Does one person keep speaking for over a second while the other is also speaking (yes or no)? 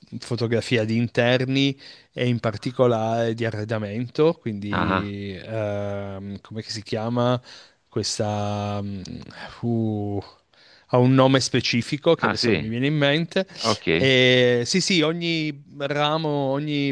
no